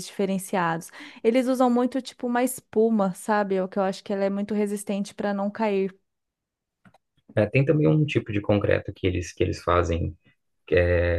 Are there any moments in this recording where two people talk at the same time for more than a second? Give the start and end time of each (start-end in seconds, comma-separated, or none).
none